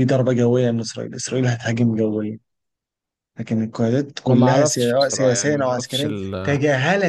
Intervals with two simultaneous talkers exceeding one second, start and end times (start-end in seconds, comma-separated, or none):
4.3-6.1